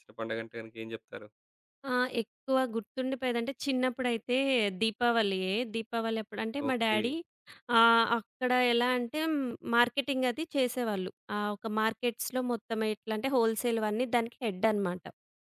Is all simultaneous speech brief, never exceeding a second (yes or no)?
yes